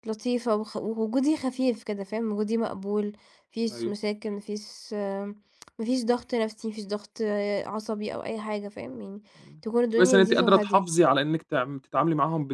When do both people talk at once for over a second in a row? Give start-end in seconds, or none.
9.6-11.0